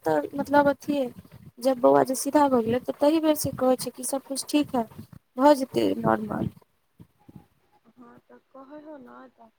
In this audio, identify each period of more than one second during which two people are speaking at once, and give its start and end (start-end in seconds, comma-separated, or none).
none